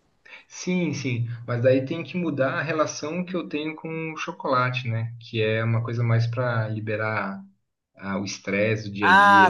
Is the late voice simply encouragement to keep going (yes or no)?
no